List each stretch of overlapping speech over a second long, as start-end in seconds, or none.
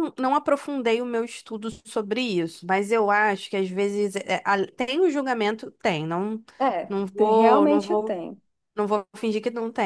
6.8-8.2